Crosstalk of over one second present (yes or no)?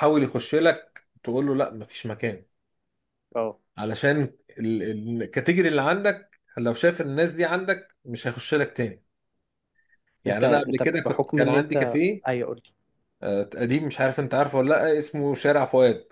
yes